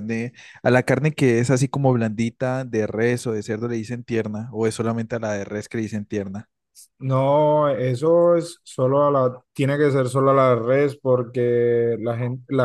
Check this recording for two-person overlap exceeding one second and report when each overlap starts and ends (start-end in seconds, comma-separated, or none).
none